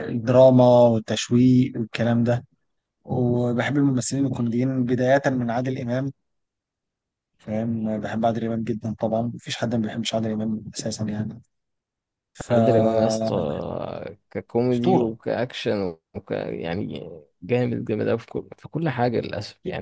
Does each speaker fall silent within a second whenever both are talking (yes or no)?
yes